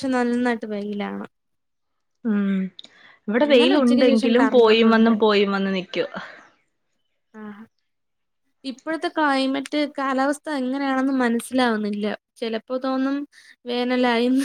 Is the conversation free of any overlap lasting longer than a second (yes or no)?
no